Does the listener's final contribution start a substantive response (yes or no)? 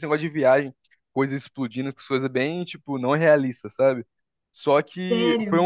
no